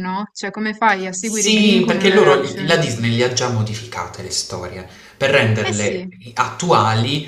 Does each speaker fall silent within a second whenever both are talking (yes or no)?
no